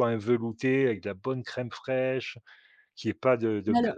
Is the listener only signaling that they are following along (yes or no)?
yes